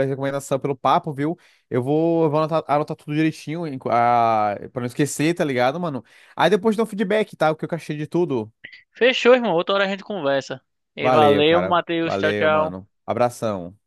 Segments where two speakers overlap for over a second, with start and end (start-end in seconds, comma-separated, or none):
11.0-12.8